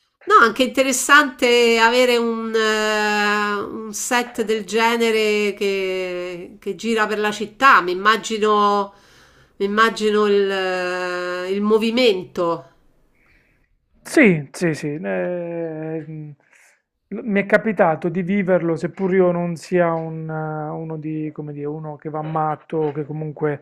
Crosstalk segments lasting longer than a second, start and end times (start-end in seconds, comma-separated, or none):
none